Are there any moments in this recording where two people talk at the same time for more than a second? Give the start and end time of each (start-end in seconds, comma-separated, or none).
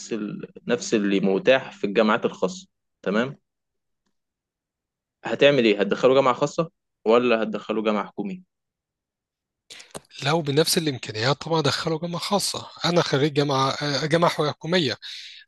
none